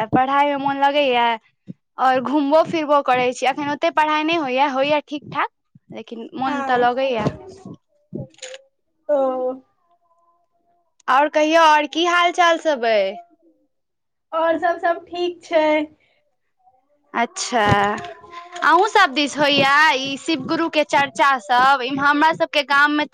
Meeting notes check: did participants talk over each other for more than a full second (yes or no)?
no